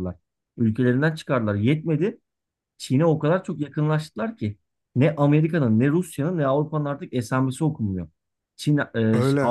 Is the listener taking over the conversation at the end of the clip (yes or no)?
no